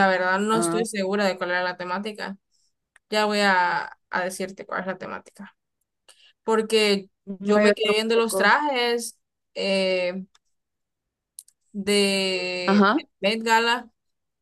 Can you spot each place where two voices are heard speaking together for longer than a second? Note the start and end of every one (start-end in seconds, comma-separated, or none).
7.3-8.5